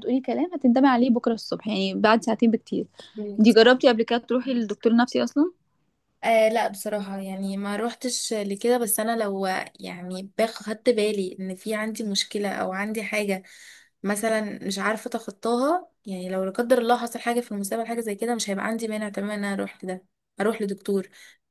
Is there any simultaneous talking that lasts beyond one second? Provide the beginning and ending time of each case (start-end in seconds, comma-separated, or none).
none